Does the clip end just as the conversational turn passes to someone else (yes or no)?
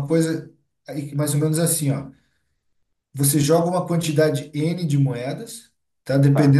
no